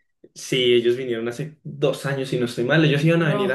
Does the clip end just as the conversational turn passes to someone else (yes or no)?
no